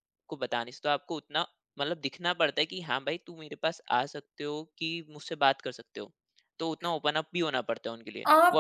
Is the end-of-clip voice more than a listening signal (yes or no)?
yes